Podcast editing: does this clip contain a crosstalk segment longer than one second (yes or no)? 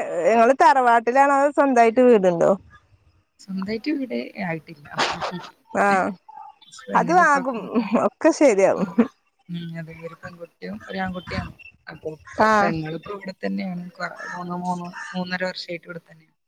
no